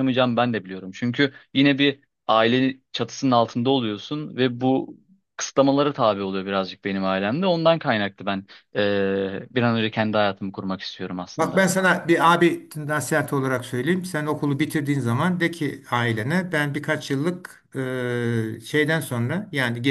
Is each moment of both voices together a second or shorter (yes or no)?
yes